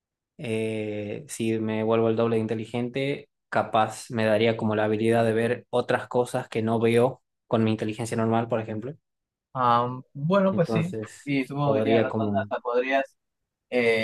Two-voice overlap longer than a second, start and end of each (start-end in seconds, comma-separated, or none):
10.5-12.5